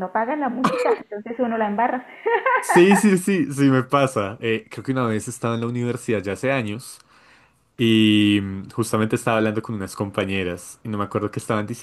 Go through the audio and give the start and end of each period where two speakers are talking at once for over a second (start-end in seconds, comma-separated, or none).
none